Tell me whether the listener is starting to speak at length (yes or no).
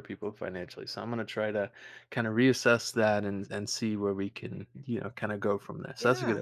yes